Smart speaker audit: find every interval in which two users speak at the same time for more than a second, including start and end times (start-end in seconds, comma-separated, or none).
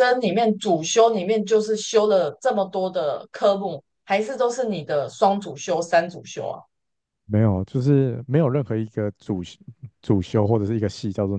none